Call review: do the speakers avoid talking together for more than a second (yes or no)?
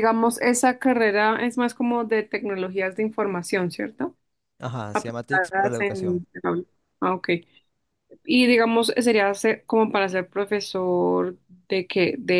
no